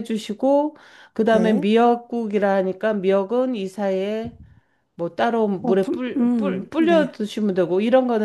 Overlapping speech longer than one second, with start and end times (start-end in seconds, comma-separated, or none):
5.6-7.1